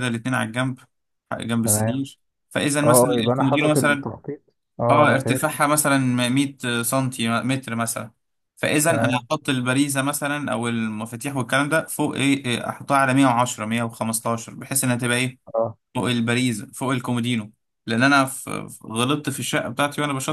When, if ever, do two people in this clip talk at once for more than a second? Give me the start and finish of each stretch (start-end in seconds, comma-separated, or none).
2.8-4.1